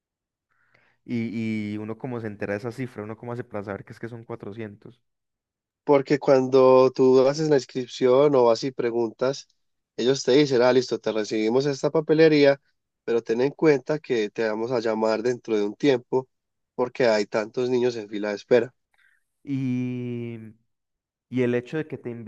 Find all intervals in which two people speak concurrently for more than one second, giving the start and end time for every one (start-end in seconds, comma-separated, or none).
none